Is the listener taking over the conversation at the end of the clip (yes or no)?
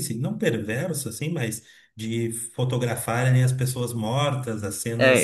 yes